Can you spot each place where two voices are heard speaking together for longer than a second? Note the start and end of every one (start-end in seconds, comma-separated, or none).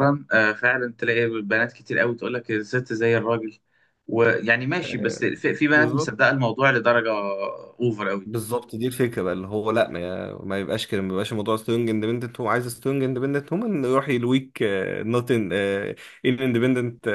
4.8-6.2